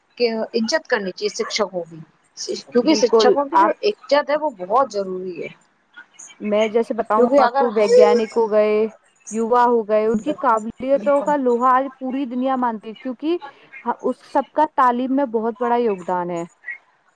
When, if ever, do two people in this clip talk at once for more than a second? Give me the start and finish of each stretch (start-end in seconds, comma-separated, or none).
2.7-4.2